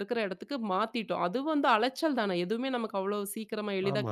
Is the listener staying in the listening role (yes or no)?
no